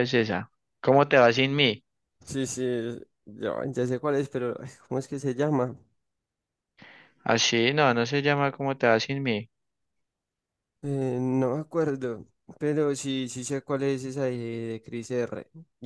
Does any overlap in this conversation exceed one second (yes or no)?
no